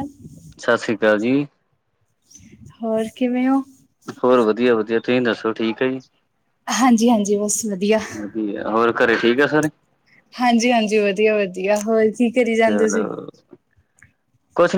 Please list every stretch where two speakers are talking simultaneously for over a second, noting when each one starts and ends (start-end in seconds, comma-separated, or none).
none